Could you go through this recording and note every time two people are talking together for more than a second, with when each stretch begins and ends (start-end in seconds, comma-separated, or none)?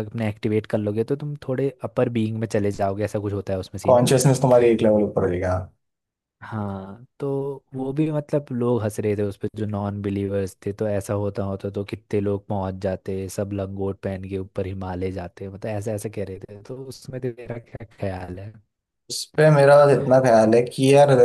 none